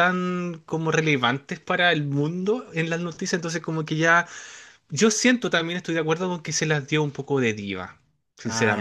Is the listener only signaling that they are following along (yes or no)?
no